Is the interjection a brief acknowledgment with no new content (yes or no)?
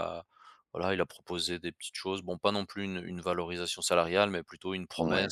yes